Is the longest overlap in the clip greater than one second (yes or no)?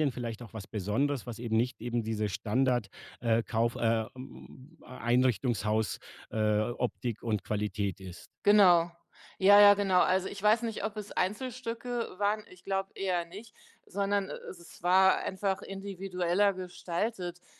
no